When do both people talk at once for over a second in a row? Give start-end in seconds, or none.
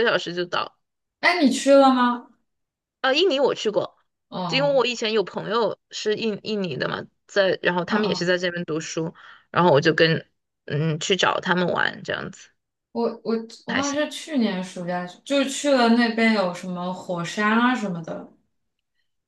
none